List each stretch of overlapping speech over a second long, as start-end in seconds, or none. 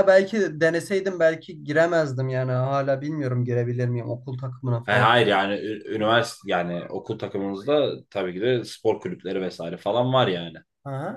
none